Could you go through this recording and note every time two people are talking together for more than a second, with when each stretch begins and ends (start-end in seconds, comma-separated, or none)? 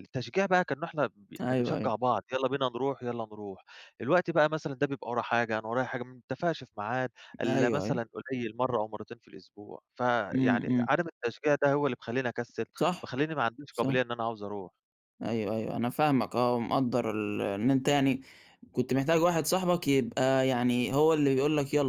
none